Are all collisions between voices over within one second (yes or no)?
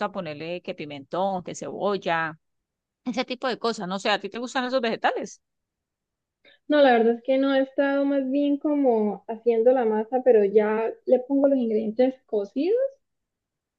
yes